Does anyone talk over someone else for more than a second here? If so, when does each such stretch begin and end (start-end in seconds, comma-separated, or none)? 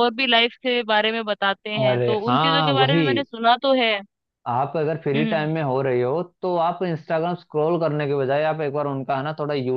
1.8-3.2